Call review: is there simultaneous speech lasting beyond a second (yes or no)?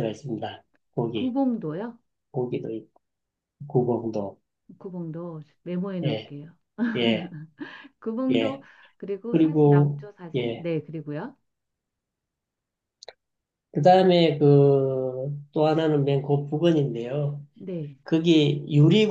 yes